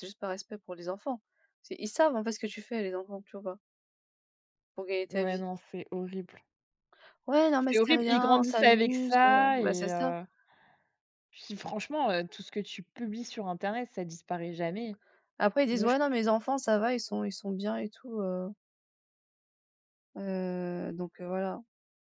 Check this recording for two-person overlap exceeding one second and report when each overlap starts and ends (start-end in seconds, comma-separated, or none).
7.7-10.1